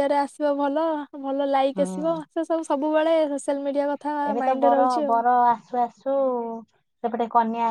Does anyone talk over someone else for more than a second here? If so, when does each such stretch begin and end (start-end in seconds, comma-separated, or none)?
none